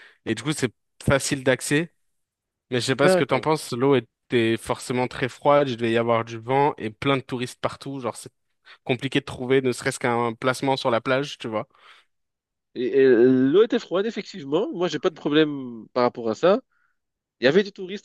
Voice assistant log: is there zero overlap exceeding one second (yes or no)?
yes